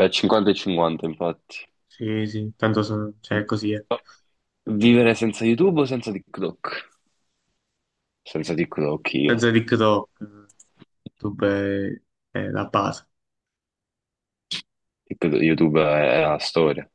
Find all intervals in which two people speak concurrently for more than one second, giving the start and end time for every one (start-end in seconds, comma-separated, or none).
none